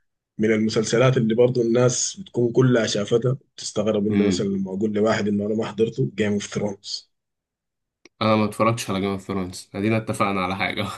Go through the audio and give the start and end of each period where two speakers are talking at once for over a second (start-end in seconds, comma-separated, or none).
none